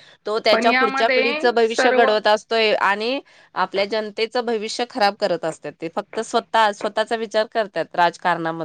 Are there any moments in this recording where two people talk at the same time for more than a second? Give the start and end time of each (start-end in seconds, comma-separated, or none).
0.5-2.1